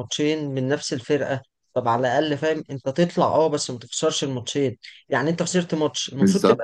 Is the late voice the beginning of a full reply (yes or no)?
no